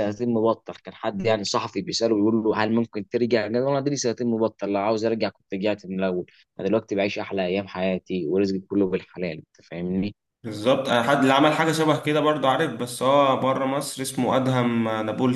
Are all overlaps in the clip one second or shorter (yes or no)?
yes